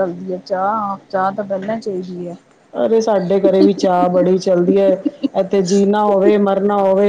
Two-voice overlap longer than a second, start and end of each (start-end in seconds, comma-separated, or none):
none